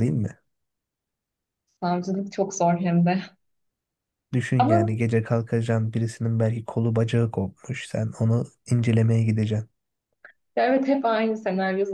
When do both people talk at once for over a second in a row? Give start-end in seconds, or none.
none